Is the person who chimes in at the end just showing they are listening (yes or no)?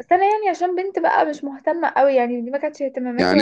no